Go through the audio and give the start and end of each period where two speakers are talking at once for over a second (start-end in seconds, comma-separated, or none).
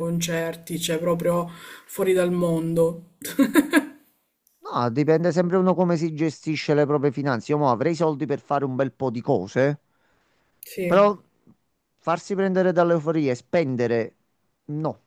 none